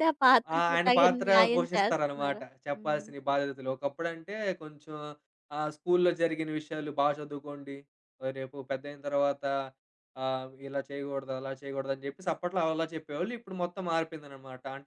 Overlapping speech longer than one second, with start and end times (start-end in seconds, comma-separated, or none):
0.5-3.1